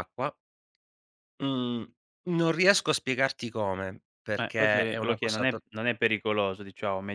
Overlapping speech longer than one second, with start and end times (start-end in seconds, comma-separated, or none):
4.4-5.6